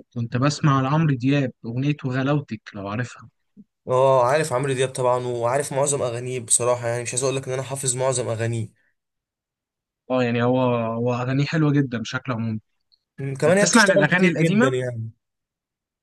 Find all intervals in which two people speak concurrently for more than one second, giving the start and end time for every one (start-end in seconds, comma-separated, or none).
13.5-14.7